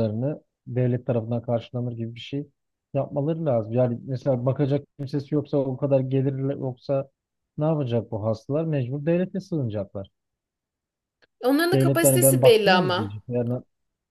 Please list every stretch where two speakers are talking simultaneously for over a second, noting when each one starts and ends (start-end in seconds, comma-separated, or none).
11.7-13.2